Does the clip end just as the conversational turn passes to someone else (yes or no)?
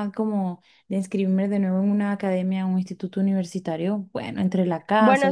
yes